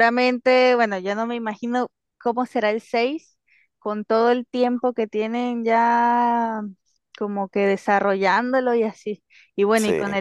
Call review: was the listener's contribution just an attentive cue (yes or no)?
yes